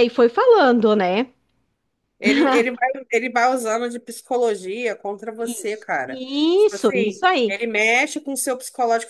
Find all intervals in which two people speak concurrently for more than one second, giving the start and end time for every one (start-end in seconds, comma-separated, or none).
5.4-7.5